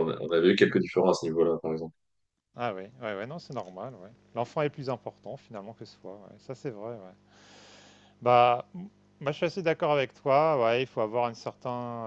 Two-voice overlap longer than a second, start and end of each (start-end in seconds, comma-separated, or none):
none